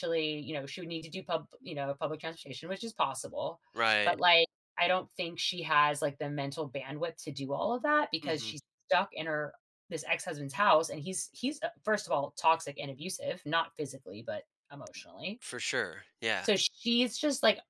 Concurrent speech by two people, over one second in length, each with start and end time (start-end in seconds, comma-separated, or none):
none